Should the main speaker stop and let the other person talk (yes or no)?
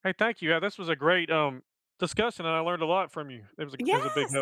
yes